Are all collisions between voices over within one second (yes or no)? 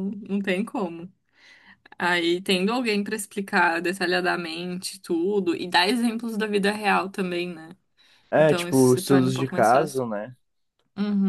no